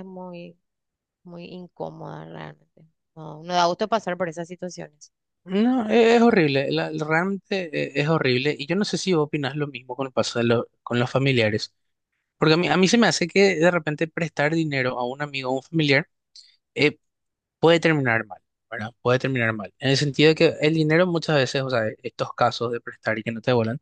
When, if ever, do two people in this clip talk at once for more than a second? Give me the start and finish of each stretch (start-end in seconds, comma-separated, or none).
none